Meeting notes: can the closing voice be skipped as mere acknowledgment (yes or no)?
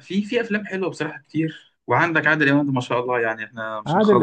no